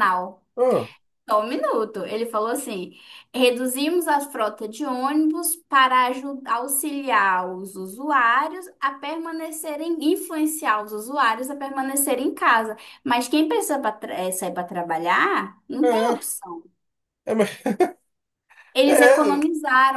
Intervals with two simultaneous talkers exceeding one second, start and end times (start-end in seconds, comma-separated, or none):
none